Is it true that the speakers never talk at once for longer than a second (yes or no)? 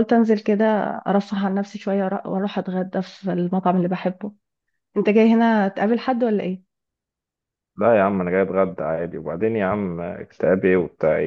yes